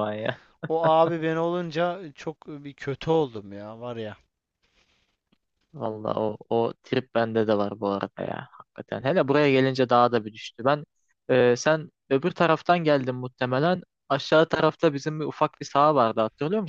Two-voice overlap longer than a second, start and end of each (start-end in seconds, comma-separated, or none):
none